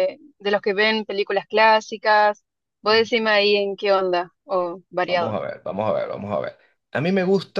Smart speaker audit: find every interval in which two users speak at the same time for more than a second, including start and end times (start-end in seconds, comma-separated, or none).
none